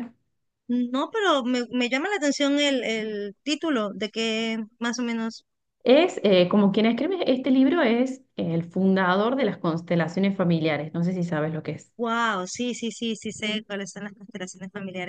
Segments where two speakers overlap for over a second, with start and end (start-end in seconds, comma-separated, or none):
none